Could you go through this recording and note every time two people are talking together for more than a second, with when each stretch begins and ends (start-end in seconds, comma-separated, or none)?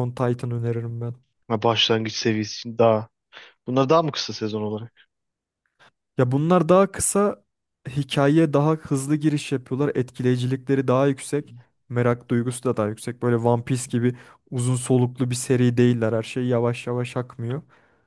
none